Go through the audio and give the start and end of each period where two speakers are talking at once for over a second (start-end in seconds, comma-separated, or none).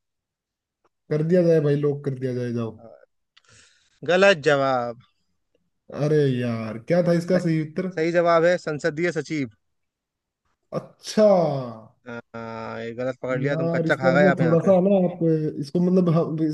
13.4-14.7